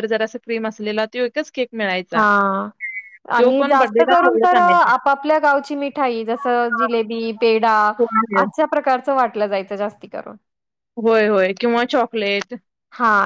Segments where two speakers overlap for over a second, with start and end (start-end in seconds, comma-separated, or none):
3.4-5.0